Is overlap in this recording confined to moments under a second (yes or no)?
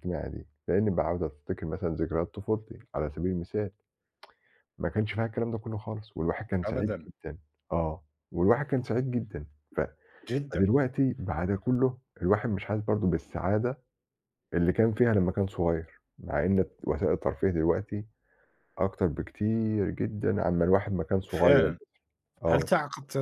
yes